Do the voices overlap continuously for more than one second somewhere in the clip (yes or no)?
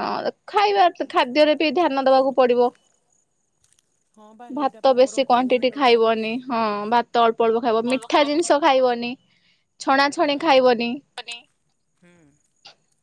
yes